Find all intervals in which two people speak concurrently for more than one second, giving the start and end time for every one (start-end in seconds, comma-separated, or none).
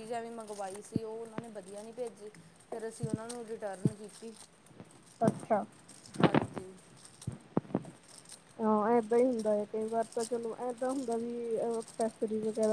none